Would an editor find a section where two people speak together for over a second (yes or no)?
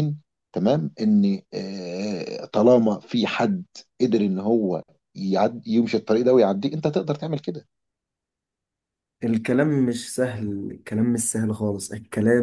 no